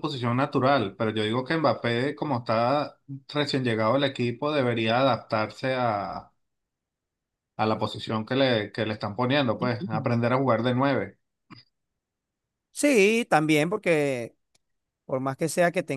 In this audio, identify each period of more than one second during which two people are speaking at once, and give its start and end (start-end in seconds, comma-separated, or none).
none